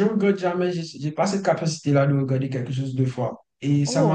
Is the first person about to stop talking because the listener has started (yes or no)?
no